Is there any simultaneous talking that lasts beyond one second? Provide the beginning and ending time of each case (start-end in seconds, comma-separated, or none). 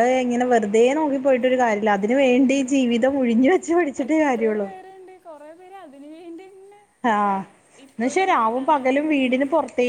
8.0-9.3